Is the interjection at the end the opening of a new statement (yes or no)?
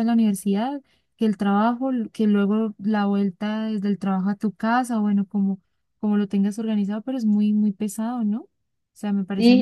yes